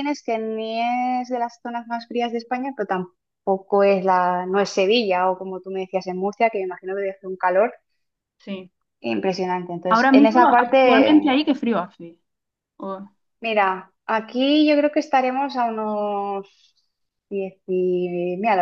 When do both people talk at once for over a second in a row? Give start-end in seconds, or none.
9.9-11.4